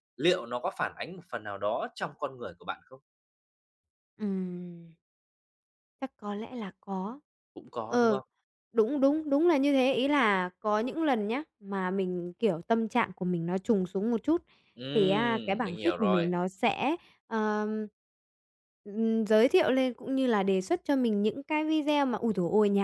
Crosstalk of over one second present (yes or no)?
yes